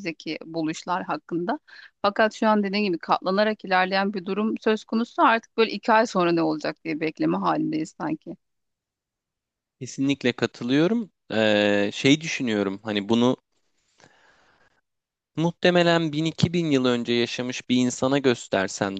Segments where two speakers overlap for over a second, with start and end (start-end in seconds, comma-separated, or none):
none